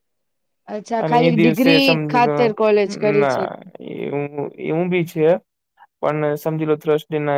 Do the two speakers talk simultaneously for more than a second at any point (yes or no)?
yes